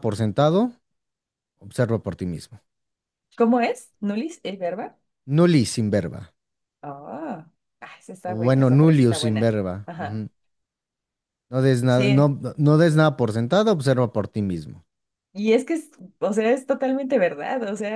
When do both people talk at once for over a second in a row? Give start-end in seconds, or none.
8.2-10.2